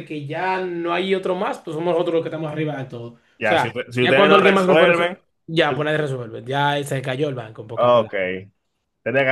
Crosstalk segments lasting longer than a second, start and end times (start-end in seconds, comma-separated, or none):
3.4-5.2